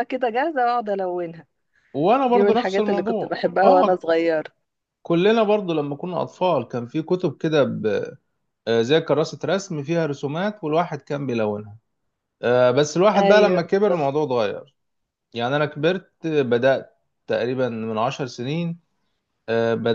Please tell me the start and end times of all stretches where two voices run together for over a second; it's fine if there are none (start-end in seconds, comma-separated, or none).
2.3-4.1